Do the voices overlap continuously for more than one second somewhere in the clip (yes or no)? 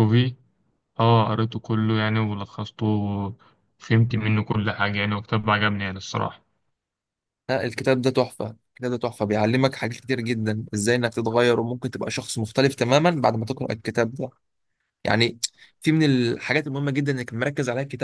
no